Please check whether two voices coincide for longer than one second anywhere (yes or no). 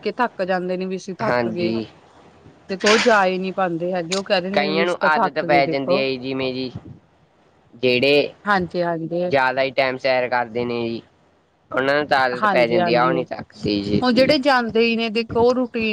yes